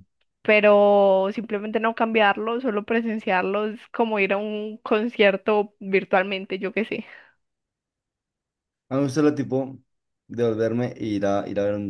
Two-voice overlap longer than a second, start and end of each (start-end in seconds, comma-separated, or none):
none